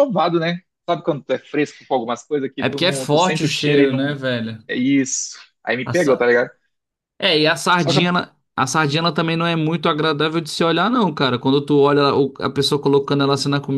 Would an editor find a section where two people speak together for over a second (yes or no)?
yes